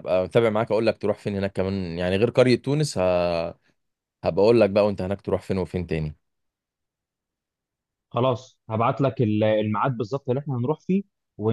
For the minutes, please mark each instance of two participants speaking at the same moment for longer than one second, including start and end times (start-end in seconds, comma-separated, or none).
none